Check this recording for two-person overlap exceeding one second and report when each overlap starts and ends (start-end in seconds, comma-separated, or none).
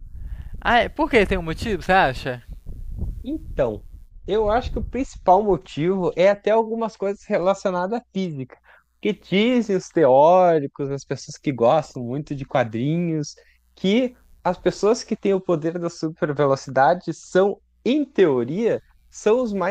none